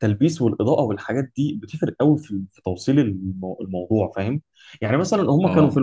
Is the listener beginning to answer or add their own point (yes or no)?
no